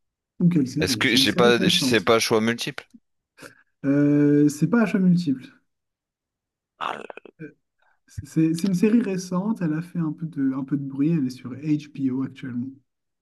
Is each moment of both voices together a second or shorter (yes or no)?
no